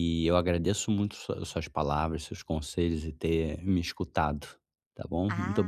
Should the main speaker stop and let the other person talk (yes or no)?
yes